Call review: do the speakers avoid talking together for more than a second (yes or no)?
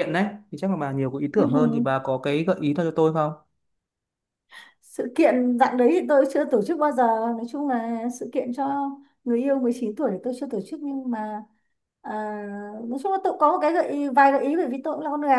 yes